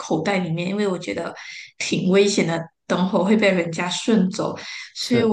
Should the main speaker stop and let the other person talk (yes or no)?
no